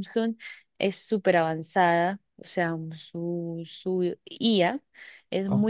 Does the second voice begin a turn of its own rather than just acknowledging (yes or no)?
no